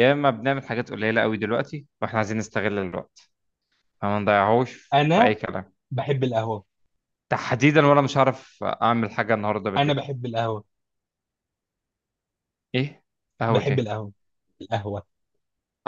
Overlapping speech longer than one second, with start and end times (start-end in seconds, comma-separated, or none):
none